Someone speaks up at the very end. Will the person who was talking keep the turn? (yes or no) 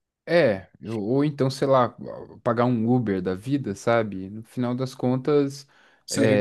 yes